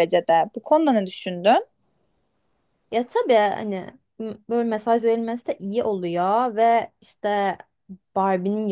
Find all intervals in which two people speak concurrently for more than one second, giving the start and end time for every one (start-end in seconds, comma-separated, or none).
none